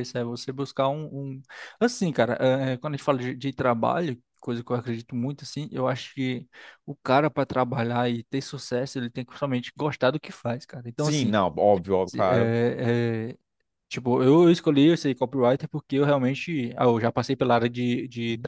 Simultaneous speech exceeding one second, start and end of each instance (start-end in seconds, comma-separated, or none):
none